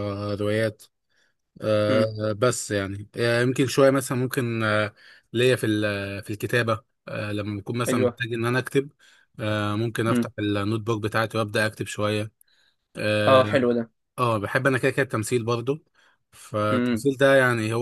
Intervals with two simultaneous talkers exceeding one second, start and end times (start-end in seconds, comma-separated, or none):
none